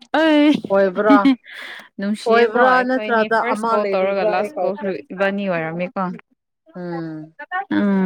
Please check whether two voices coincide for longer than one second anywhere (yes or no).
yes